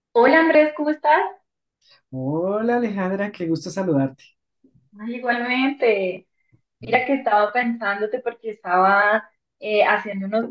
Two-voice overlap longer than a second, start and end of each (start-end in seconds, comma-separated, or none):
none